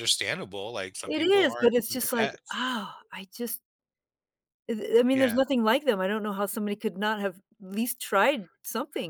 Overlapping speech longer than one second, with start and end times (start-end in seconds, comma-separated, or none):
1.1-2.6